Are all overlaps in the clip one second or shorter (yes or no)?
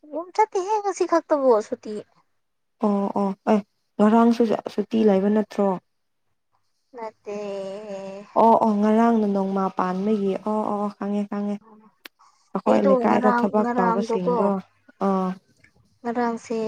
no